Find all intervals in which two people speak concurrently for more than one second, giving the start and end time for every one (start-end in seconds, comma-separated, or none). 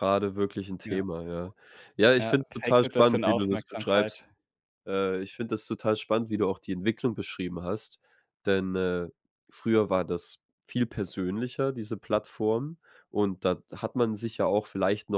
2.2-4.2